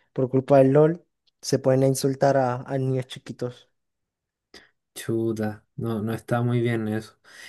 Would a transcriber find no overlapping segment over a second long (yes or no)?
yes